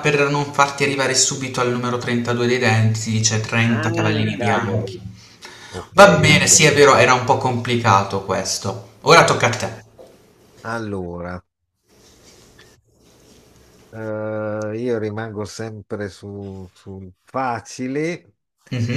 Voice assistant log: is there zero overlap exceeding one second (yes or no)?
no